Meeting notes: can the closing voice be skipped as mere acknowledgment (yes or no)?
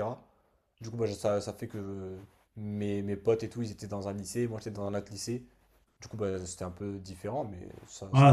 no